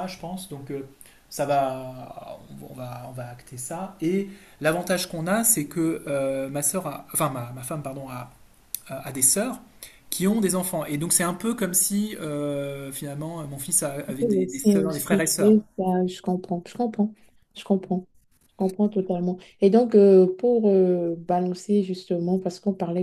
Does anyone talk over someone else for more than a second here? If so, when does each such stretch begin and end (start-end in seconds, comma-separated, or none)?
14.2-15.6